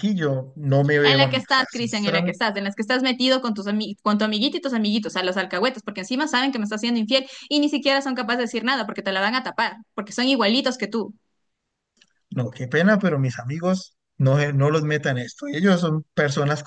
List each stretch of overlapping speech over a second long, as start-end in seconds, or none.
1.0-2.4